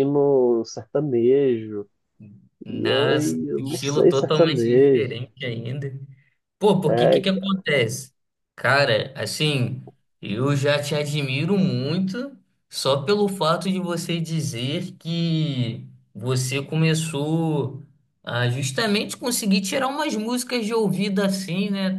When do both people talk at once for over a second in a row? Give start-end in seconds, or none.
2.7-5.3